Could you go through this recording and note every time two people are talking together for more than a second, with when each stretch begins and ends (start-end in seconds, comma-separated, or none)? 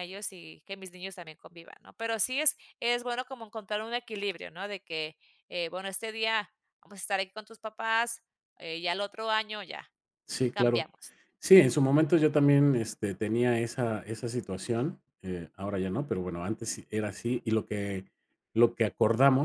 none